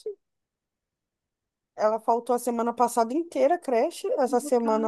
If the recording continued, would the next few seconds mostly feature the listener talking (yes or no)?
no